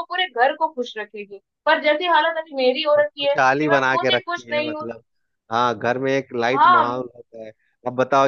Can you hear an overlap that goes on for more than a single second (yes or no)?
yes